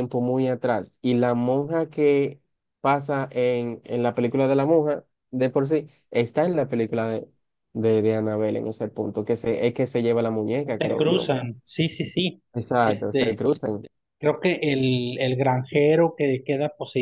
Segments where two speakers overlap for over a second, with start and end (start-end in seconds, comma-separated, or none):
none